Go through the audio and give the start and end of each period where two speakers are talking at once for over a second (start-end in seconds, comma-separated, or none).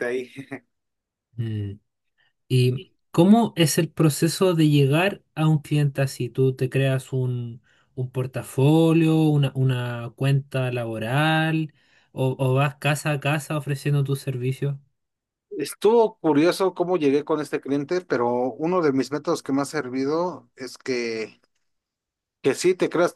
none